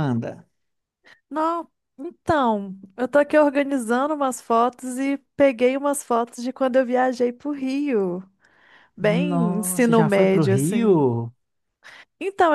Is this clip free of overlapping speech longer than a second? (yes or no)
no